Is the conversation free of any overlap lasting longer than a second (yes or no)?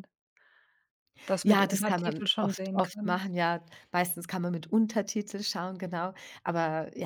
no